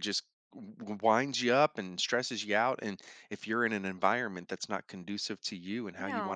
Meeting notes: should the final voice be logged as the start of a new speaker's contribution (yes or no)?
yes